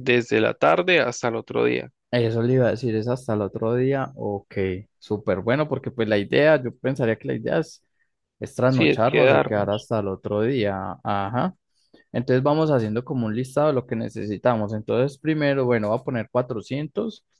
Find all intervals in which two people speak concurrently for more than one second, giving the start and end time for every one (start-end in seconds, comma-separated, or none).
8.6-9.8